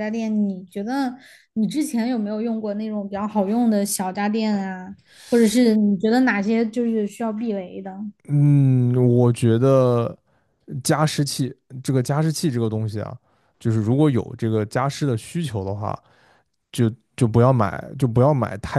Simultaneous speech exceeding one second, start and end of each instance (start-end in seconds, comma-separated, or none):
none